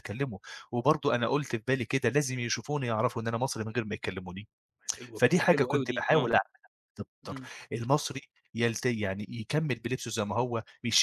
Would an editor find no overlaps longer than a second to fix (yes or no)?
no